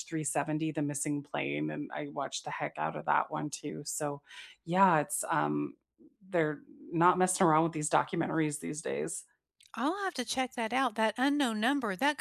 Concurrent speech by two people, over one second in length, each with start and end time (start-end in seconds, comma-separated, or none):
none